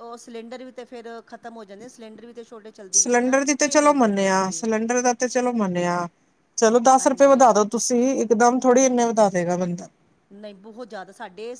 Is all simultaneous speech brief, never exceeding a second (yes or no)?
no